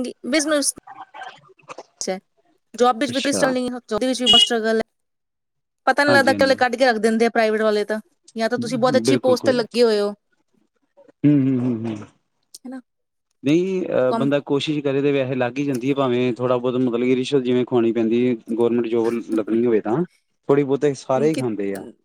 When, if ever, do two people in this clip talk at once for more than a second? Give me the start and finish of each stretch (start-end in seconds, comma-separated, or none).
none